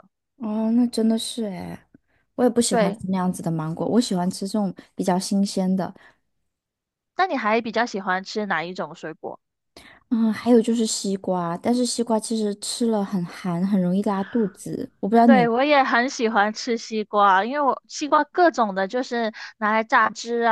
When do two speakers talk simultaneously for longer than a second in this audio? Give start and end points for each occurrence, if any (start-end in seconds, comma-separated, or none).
none